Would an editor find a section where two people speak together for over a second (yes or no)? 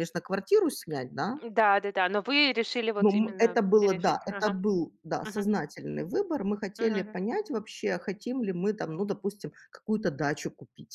yes